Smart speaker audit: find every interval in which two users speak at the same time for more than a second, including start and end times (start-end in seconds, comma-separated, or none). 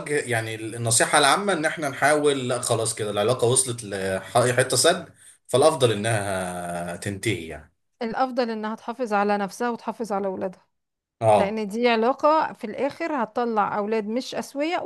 none